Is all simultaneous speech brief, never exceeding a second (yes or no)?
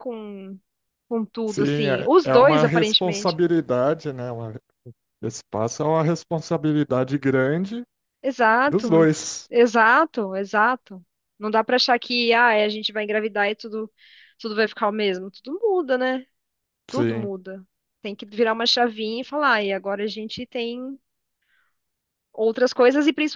no